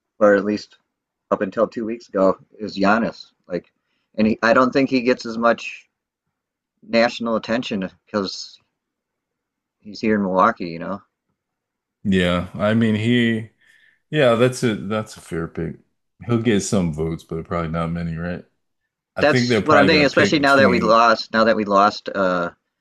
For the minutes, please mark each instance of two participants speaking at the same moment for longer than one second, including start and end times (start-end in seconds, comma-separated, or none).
19.2-21.0